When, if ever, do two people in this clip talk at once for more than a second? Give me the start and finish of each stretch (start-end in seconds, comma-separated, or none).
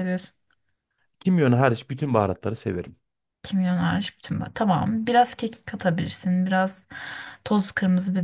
none